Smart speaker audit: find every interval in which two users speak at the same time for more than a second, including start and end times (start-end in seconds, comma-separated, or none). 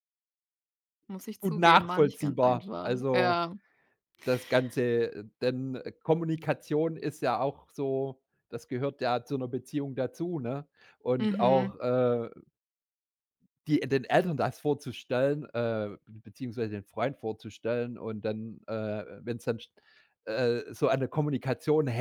1.4-3.4